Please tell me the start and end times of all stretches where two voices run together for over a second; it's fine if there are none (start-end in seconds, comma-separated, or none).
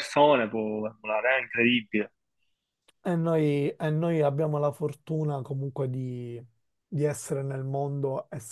none